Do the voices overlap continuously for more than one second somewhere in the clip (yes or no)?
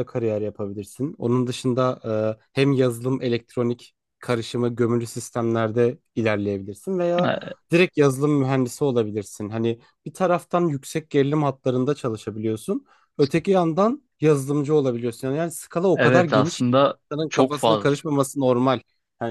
yes